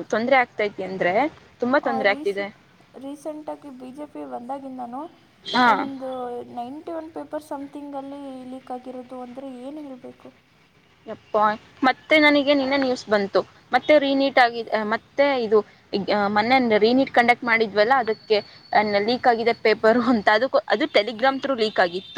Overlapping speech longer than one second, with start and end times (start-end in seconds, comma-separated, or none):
none